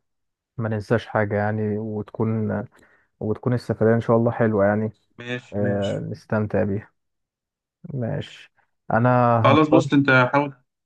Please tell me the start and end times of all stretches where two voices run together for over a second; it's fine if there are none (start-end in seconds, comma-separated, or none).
none